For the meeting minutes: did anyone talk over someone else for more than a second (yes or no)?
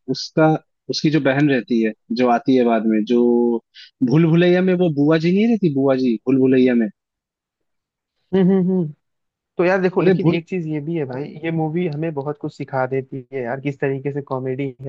no